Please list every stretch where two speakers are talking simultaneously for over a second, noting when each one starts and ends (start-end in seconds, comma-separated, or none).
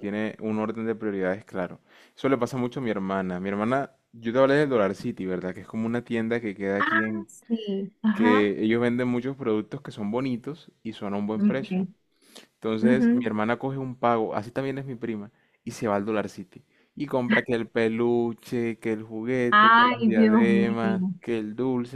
19.5-20.8